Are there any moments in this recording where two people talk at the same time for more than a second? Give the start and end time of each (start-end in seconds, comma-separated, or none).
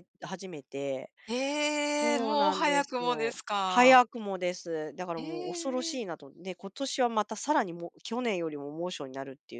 2.0-4.0